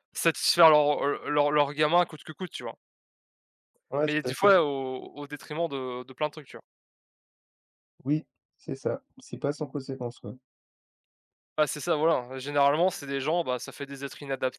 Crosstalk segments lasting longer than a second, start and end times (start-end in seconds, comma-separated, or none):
none